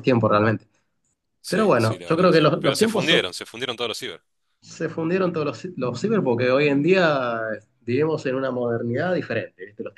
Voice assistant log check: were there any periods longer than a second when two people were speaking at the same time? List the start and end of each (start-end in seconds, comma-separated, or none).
1.5-3.3